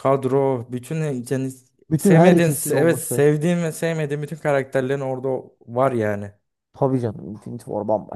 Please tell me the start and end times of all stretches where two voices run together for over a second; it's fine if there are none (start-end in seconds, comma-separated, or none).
2.0-3.2